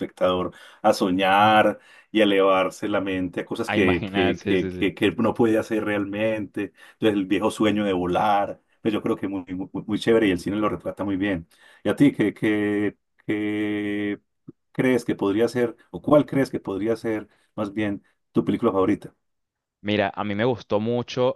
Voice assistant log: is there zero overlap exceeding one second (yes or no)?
no